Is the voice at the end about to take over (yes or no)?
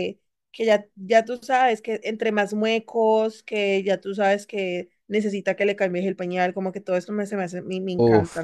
yes